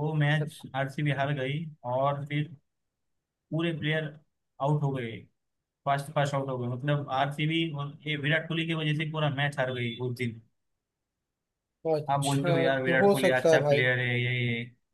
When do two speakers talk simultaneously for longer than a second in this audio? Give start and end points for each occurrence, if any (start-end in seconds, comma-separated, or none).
12.1-13.8